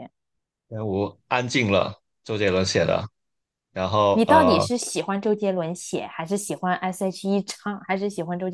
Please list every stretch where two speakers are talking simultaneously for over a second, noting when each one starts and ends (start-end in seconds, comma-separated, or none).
none